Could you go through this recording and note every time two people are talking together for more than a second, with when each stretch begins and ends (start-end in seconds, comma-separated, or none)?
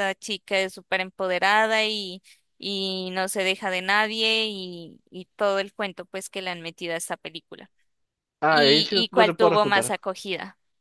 8.5-10.0